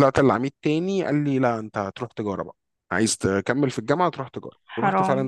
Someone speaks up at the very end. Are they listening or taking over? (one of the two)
listening